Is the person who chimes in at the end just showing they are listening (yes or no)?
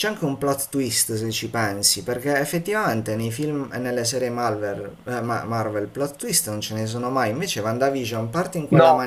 yes